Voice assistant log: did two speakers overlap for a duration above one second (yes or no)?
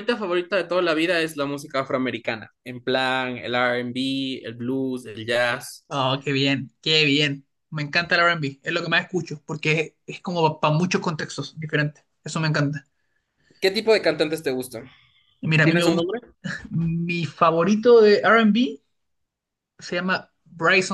no